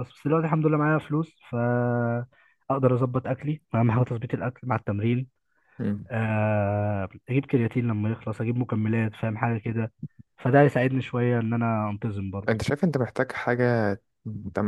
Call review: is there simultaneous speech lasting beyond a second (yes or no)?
no